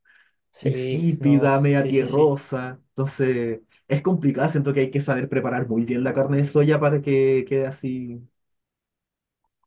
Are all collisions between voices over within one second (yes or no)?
no